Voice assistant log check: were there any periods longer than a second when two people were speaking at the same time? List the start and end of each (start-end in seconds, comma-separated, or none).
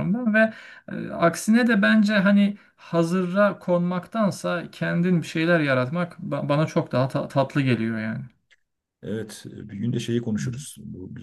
none